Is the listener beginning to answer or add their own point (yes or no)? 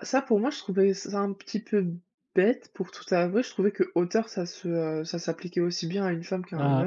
yes